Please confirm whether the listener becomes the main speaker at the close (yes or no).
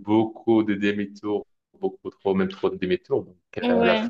no